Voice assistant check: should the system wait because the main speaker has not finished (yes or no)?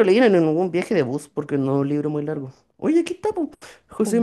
yes